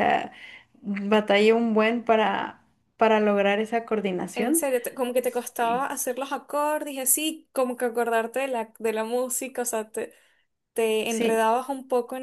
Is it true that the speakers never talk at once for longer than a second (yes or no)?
yes